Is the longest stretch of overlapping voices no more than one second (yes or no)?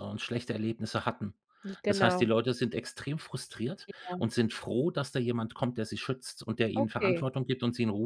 yes